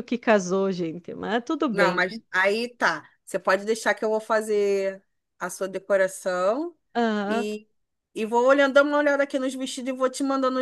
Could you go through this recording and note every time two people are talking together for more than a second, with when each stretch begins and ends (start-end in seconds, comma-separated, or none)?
none